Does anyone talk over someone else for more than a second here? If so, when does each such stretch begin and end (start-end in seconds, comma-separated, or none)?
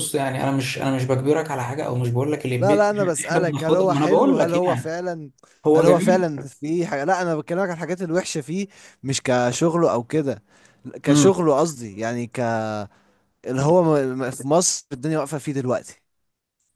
2.6-5.0